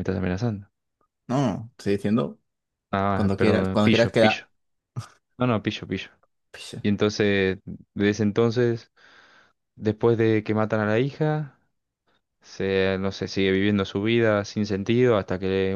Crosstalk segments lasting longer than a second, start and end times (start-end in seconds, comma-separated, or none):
3.1-4.5